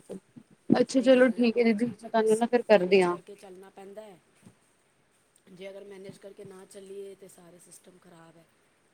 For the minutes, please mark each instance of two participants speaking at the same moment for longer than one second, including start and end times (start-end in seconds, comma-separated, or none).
0.9-3.1